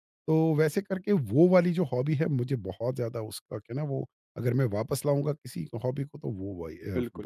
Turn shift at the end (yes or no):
yes